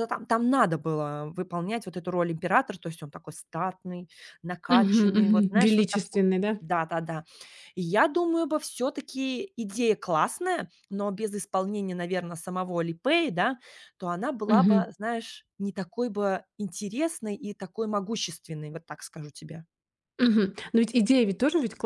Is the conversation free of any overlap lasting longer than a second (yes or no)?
no